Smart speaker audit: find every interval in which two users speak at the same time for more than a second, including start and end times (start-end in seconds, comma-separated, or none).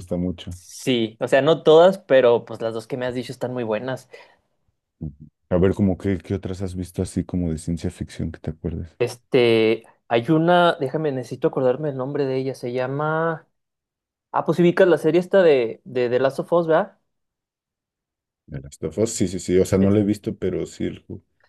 none